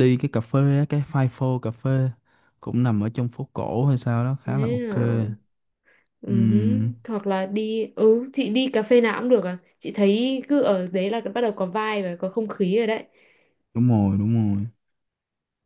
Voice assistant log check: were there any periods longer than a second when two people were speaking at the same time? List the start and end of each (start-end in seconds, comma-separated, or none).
none